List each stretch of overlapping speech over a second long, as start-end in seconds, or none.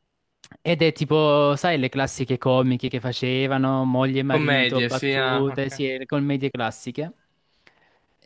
4.2-5.8